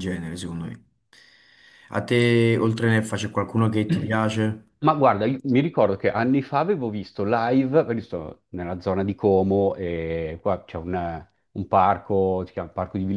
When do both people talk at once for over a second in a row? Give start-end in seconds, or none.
none